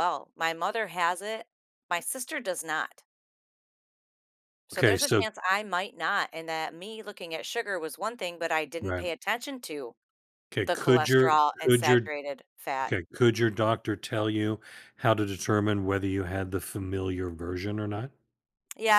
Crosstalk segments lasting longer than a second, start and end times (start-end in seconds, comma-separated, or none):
10.7-12.1